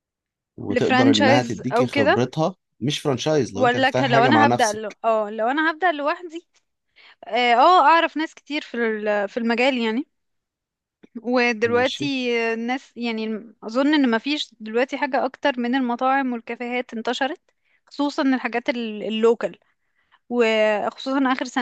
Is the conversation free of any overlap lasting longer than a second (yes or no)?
no